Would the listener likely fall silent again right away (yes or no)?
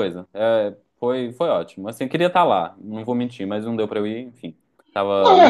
no